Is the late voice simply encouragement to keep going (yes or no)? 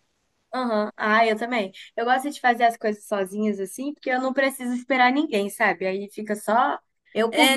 no